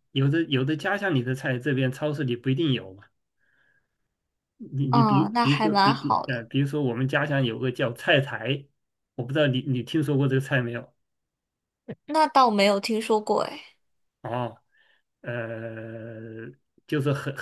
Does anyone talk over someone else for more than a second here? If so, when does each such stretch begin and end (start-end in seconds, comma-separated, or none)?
4.9-6.4